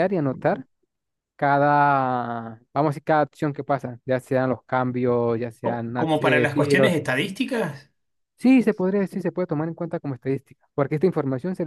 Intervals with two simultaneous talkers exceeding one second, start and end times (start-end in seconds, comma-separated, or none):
5.6-7.0